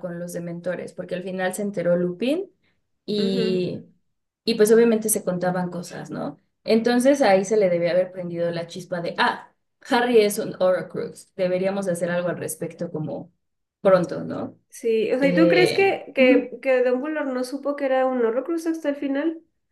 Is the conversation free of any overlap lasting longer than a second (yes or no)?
no